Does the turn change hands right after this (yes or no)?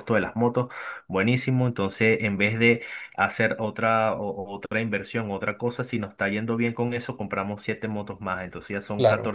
no